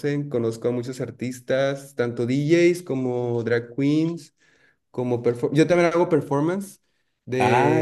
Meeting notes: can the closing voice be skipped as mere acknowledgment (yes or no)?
no